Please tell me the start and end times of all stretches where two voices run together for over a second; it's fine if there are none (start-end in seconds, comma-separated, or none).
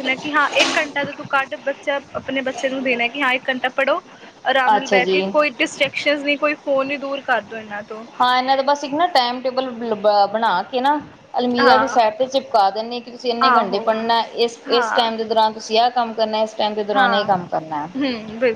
none